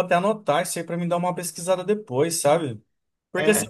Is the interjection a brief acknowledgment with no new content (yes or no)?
yes